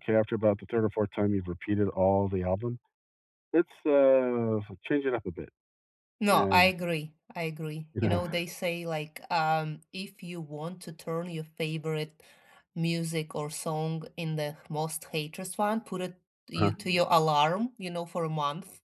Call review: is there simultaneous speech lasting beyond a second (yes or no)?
no